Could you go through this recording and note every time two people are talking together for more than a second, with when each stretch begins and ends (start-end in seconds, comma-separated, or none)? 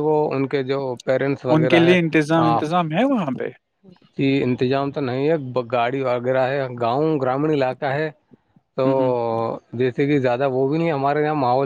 none